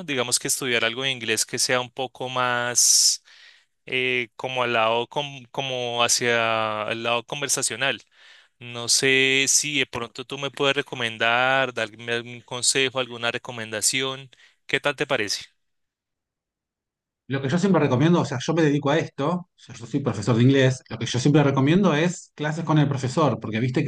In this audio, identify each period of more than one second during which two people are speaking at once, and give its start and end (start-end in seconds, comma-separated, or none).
none